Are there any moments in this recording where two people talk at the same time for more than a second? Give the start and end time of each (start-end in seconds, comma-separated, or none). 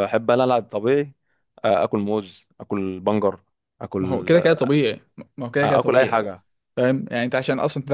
none